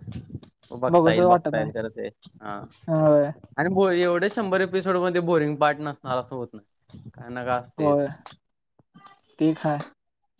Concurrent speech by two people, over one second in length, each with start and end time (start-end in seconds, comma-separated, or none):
none